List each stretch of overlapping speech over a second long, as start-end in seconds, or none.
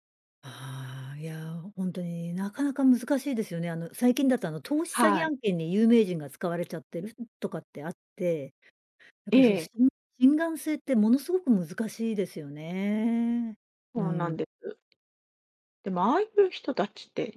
none